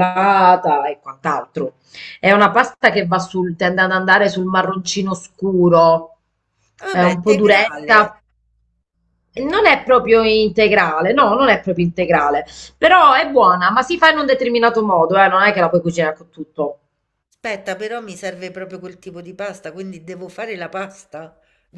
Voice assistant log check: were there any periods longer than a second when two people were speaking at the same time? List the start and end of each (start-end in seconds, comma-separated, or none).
6.9-8.1